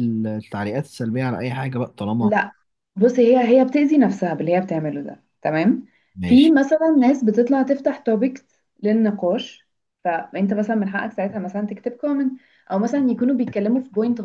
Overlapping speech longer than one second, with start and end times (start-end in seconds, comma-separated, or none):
none